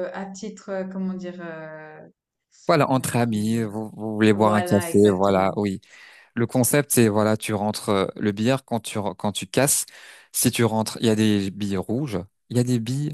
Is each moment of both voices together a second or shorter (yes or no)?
no